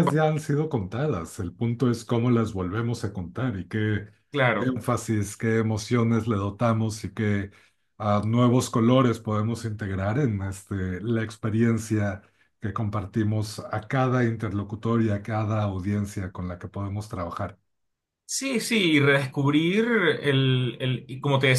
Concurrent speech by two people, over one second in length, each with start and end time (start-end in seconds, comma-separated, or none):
none